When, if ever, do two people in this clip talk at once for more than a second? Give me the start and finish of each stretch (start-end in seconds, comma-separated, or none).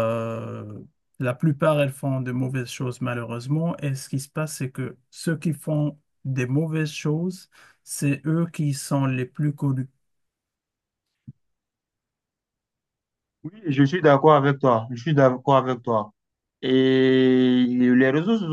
none